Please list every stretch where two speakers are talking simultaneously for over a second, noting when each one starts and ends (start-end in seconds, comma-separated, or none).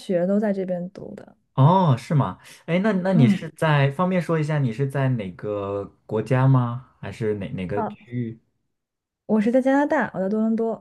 none